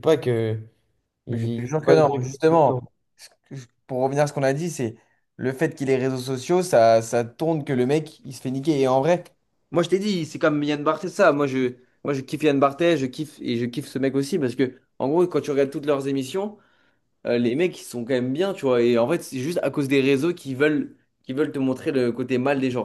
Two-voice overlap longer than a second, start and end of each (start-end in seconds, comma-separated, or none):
1.3-2.8